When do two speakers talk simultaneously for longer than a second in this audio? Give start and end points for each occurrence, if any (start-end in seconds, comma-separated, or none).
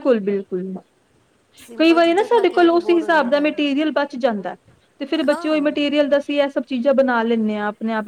1.8-3.6